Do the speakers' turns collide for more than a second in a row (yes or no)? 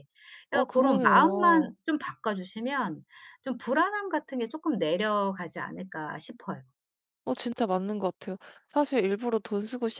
yes